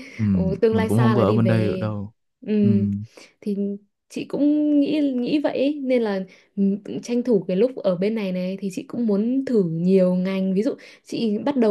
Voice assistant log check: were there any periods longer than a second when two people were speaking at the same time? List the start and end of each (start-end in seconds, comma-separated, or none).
0.7-1.9